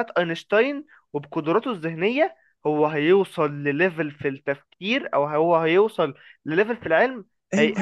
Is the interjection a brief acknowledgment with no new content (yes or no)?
no